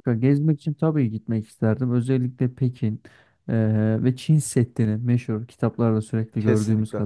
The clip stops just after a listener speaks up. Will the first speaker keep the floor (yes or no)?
yes